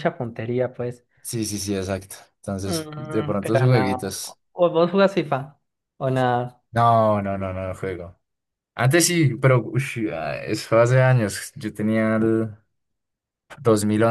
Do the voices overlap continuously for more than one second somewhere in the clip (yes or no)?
yes